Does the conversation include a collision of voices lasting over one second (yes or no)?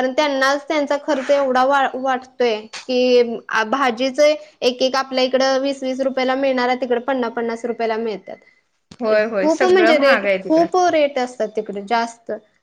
yes